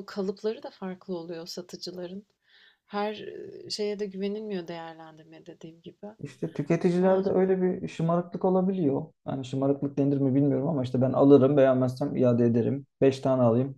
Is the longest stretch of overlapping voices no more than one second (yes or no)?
yes